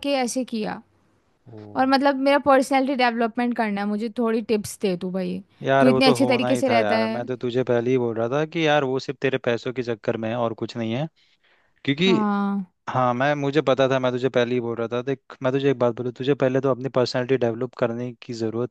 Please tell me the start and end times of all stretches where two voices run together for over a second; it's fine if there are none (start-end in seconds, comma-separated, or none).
5.8-7.2